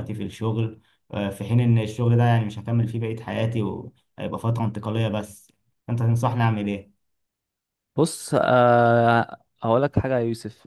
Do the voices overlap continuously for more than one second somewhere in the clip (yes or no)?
no